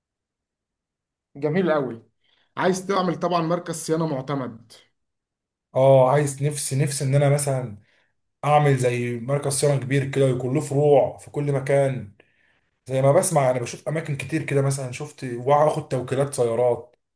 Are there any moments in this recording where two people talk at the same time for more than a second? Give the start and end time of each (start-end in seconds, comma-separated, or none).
none